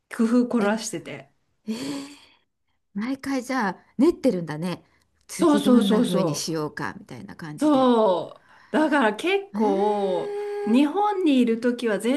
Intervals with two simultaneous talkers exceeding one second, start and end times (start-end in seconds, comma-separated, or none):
5.3-6.7